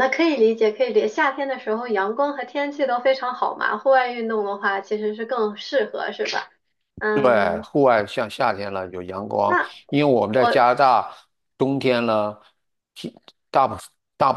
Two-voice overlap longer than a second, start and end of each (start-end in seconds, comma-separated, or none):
none